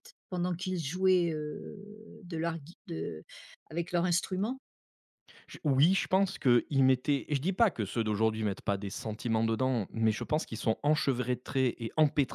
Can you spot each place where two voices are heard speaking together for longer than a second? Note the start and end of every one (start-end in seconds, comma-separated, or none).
none